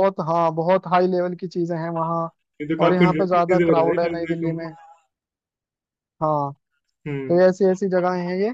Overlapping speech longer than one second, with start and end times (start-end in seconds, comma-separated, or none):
2.8-4.6